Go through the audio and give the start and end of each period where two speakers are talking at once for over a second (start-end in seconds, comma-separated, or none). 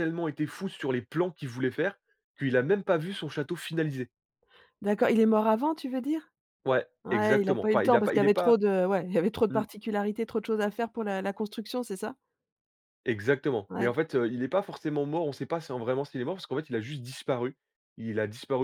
7.0-8.6